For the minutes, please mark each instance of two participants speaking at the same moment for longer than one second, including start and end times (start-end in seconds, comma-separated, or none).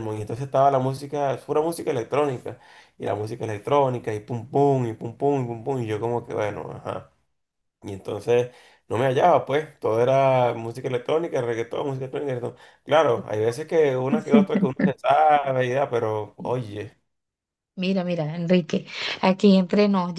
none